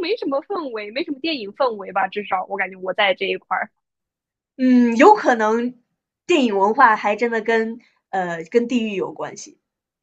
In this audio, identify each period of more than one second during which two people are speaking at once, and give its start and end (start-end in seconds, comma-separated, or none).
none